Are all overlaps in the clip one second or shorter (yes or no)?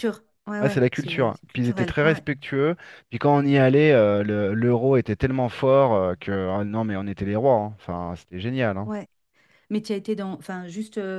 no